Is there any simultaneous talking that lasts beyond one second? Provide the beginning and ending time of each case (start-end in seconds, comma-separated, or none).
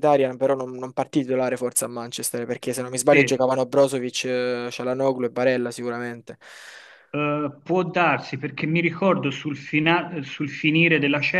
none